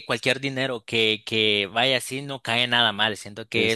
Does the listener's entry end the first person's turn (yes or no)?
no